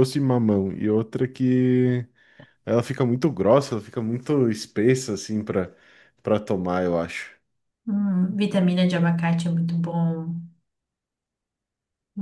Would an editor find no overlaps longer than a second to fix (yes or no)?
yes